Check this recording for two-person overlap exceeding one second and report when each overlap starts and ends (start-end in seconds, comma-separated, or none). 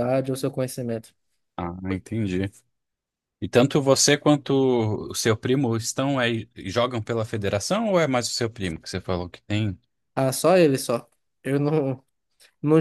none